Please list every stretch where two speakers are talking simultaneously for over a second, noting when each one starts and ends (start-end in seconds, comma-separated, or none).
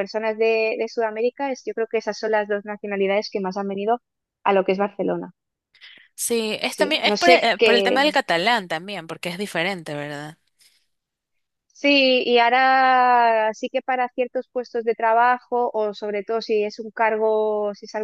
6.7-8.0